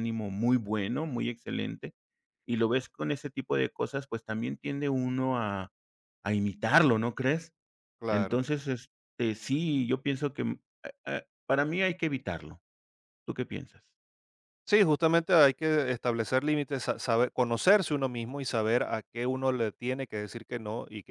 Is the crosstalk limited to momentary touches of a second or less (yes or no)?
yes